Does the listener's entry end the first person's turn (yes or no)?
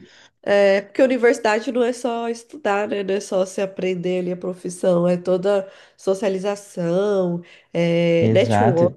no